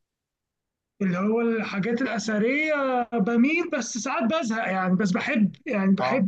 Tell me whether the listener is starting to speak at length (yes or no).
no